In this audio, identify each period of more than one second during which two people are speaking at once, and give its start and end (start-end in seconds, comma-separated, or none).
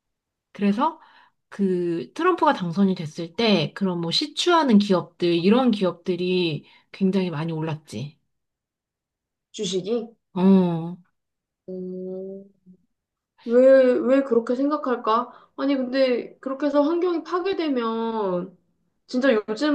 none